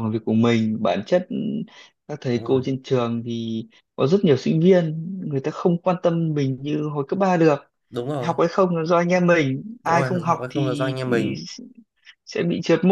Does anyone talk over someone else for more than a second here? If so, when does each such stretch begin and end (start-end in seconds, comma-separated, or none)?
9.8-11.3